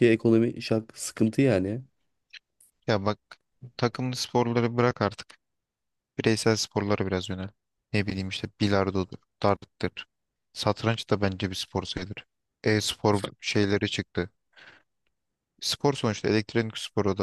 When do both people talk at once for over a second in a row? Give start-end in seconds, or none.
none